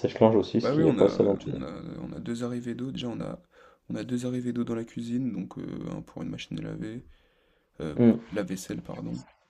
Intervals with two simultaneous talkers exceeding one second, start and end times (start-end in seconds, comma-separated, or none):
none